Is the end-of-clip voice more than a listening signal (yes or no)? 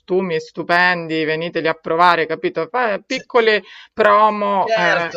yes